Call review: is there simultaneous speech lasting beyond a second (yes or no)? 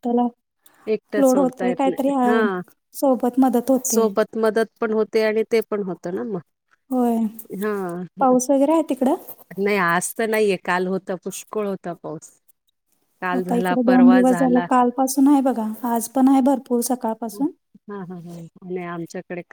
yes